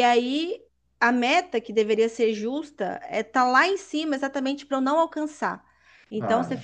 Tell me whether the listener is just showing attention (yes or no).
yes